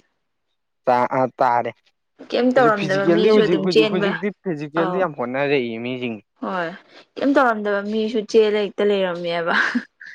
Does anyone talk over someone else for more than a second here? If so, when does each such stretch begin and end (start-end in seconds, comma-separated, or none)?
2.5-4.1